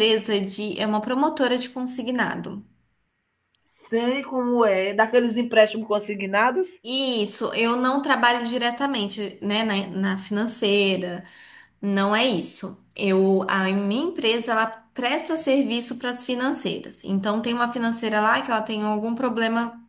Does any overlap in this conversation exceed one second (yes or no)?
no